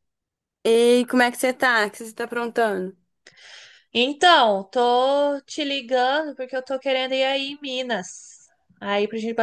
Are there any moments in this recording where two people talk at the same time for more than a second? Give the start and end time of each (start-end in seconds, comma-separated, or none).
none